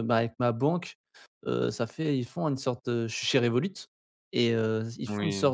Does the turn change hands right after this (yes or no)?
no